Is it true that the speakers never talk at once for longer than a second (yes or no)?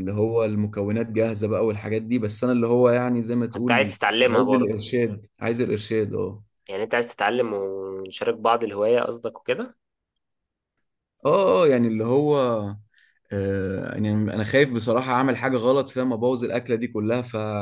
no